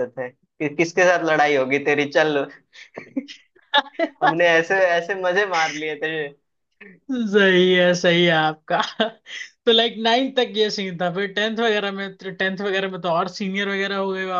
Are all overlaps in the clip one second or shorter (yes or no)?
yes